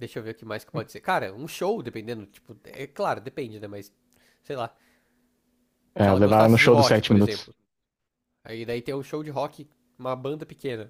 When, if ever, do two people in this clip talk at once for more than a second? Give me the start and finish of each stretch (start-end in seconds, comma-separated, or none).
6.0-7.5